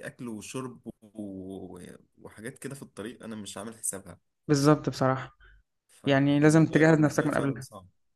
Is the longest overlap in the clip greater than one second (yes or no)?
yes